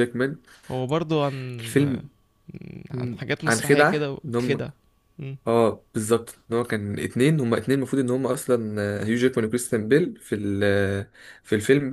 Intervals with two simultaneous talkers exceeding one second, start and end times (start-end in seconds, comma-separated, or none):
2.9-4.7